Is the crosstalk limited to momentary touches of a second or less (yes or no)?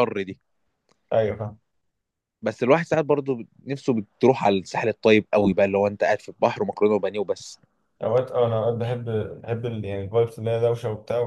yes